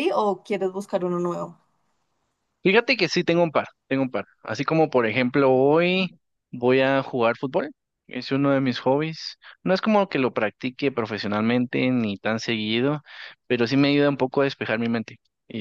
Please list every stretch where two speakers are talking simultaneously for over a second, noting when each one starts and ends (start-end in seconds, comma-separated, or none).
none